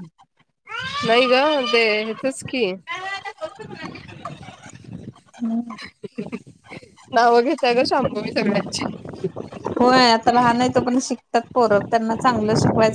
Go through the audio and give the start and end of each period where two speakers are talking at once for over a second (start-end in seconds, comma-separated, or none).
none